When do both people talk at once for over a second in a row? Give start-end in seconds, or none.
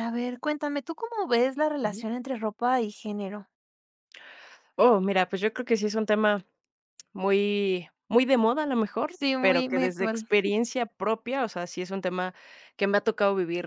9.1-10.3